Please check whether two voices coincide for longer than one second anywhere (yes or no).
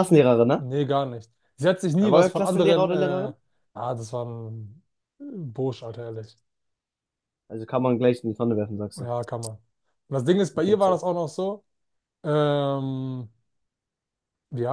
yes